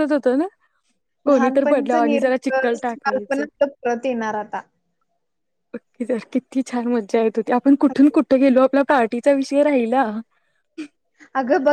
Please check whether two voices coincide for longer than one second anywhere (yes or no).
yes